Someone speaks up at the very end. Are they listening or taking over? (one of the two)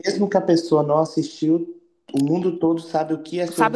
taking over